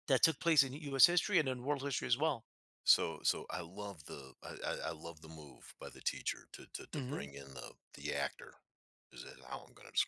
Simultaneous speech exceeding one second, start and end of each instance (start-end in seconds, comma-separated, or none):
none